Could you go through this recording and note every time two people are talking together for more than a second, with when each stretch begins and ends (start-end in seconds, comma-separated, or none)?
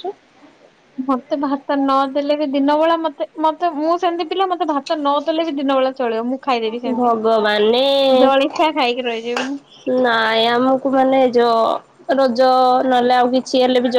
none